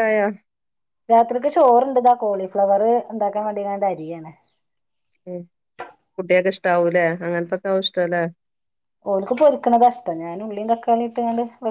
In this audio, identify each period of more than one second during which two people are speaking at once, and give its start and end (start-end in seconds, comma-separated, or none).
none